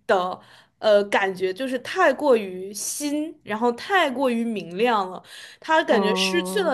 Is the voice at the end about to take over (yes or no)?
no